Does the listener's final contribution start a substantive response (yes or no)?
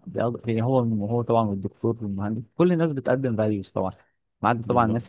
no